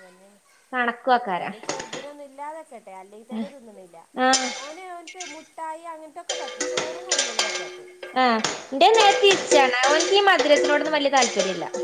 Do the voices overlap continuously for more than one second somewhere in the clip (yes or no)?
no